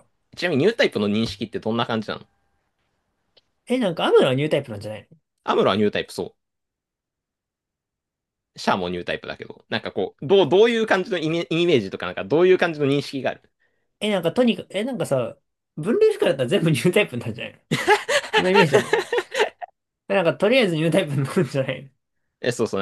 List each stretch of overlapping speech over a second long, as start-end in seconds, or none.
none